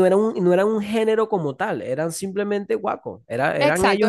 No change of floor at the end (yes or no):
no